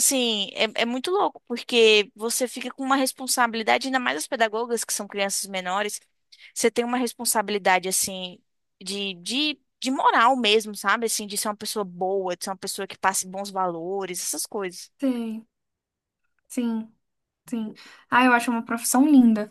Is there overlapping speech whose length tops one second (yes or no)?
no